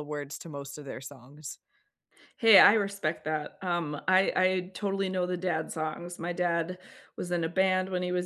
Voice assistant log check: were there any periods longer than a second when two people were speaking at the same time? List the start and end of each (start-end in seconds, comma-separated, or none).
none